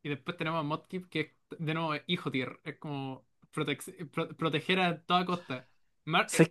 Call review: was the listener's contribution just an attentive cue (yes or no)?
yes